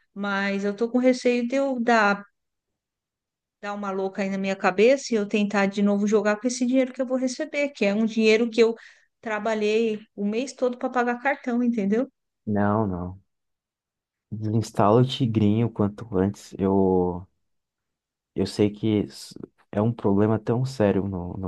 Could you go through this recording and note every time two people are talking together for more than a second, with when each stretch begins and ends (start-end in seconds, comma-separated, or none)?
none